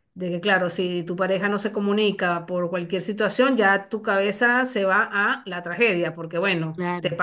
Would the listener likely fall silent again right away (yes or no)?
no